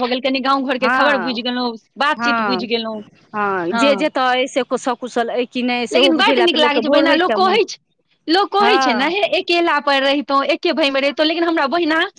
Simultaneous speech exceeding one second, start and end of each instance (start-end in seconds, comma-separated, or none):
5.9-7.6